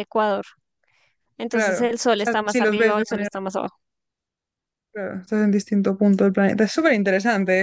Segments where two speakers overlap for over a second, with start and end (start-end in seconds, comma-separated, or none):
1.5-3.5